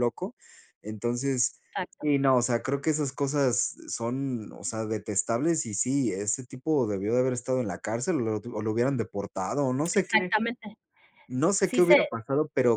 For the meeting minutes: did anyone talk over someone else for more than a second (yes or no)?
no